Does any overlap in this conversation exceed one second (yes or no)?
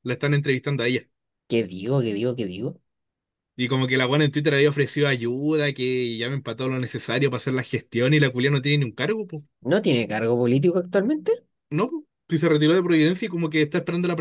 no